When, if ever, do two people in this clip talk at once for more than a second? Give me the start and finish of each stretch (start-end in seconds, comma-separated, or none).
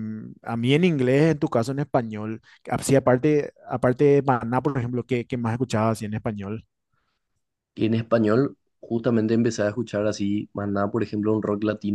none